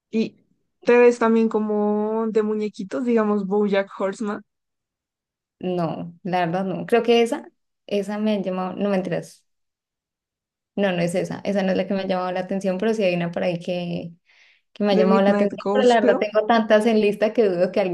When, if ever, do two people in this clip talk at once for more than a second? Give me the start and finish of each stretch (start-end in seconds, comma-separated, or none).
14.9-16.3